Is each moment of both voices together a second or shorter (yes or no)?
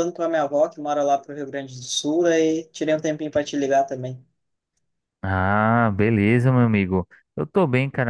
yes